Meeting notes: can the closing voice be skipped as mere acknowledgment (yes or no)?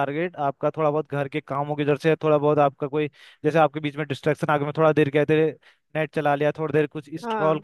yes